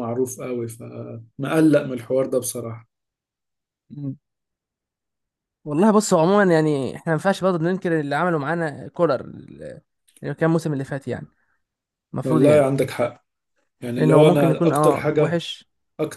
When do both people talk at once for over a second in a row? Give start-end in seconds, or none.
14.0-15.4